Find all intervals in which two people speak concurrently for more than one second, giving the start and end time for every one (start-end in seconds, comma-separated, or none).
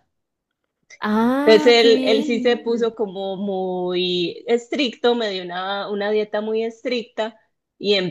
1.4-2.9